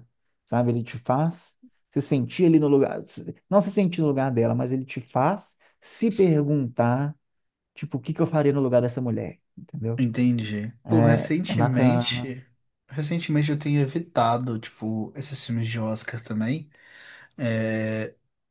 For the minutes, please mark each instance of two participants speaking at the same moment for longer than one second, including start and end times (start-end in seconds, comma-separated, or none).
10.8-12.3